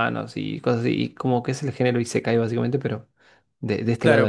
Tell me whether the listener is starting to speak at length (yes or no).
yes